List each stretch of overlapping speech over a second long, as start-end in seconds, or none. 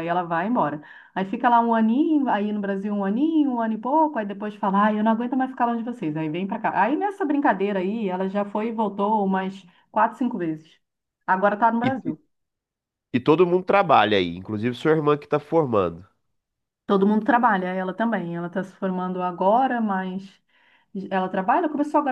none